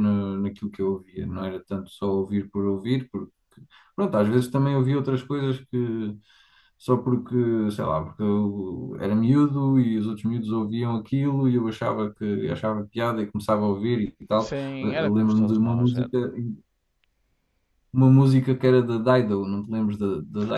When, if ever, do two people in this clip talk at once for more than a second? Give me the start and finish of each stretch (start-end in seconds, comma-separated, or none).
14.4-16.1